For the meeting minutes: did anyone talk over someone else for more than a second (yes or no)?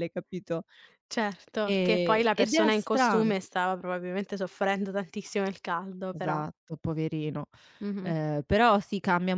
yes